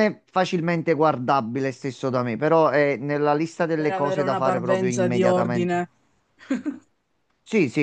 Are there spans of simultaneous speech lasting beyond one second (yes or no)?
yes